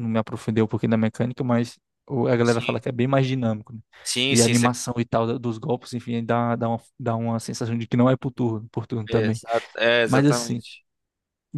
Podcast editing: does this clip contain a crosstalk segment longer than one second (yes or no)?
no